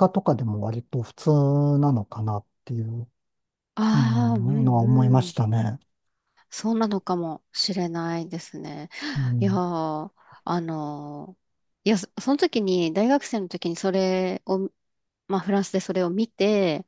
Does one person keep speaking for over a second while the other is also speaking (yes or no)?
yes